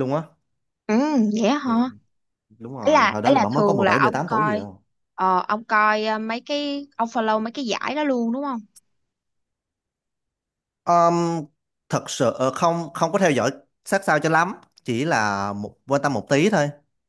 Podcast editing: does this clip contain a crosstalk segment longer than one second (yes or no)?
yes